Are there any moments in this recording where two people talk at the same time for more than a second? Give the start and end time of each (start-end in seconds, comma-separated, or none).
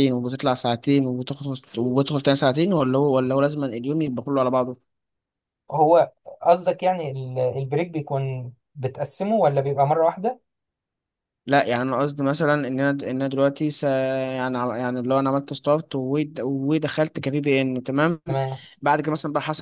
none